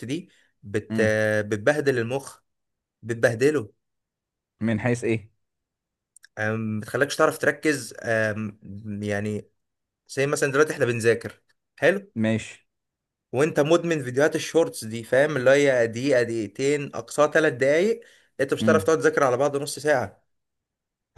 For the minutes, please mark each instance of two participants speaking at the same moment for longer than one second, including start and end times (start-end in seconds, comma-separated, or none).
none